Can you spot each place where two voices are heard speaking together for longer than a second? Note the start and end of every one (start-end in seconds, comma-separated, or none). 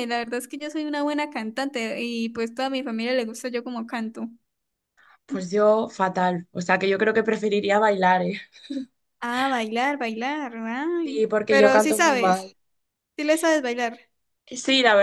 11.0-12.5